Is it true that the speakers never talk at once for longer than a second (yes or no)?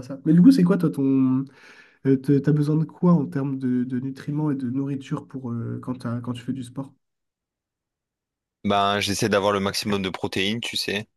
yes